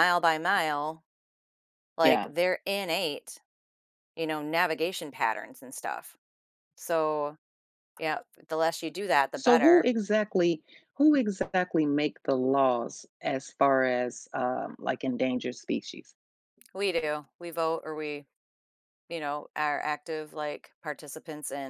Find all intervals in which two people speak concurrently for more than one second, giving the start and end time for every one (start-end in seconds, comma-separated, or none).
none